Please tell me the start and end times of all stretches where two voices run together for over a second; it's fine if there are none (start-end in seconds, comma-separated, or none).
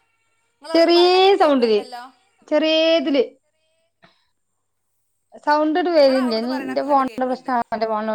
6.0-7.6